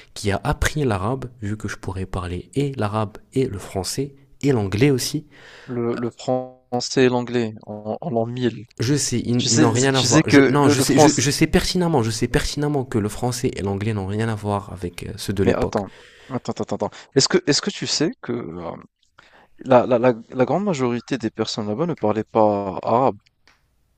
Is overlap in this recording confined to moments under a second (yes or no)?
no